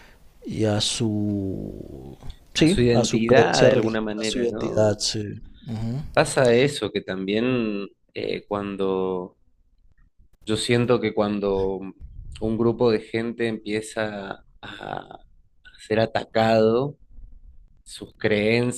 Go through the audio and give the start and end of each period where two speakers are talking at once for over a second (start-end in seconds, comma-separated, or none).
2.6-5.0